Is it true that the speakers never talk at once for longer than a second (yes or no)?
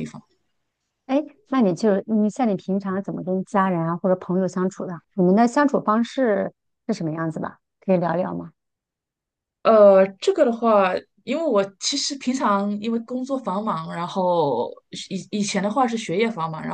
yes